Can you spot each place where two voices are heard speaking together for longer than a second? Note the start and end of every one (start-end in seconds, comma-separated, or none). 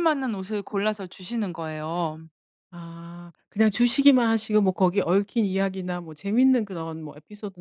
none